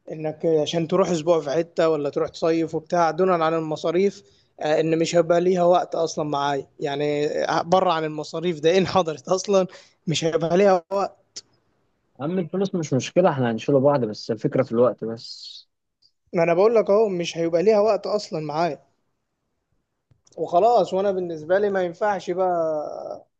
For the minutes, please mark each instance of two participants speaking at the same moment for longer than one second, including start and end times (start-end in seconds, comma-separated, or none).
none